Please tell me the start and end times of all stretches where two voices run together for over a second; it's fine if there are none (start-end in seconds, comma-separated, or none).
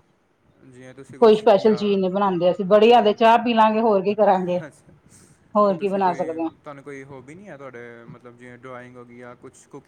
none